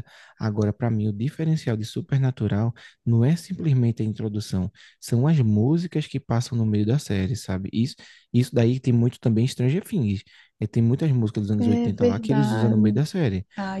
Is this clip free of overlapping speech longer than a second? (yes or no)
no